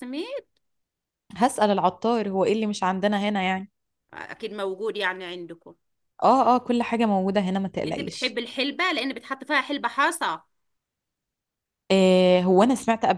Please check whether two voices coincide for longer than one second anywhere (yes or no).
no